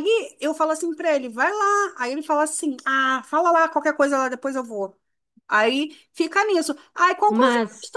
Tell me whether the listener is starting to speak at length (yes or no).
no